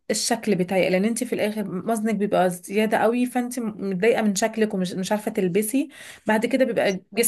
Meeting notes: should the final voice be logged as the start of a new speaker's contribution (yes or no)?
no